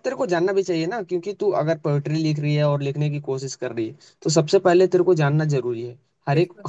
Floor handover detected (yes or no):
no